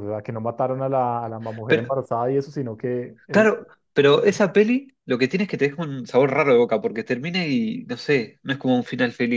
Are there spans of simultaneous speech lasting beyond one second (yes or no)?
no